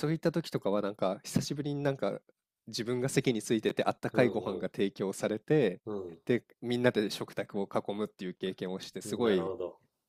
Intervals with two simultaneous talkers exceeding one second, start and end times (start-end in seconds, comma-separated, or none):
none